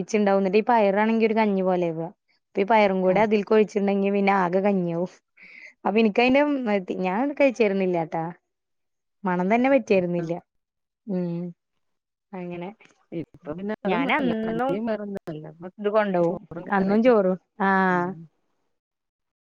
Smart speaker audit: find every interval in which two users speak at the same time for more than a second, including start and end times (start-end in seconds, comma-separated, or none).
none